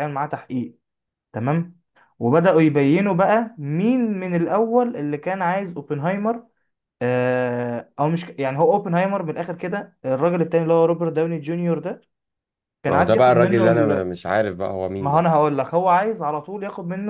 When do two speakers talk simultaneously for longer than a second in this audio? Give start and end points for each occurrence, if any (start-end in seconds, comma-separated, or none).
12.9-14.1